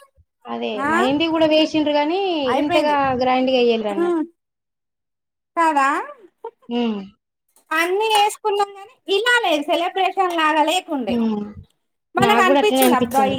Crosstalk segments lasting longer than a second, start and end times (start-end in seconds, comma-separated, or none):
none